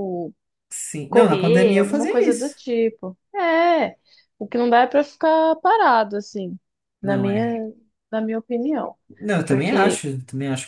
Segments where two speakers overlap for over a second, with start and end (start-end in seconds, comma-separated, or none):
1.1-2.6